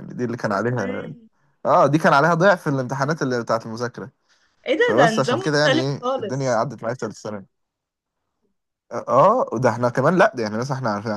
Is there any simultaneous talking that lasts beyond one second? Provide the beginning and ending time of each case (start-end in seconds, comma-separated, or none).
4.8-6.6